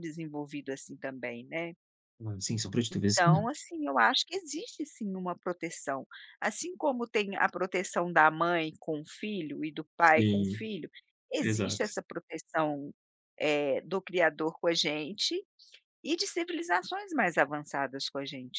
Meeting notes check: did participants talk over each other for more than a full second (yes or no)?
no